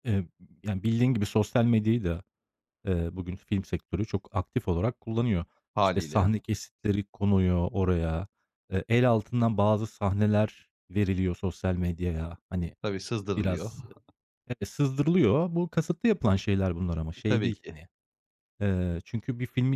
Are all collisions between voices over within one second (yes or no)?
yes